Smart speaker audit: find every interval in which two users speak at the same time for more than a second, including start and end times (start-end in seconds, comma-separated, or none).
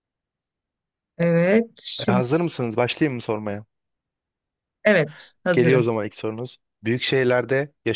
none